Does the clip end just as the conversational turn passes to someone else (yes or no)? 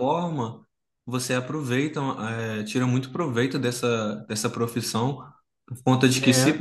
no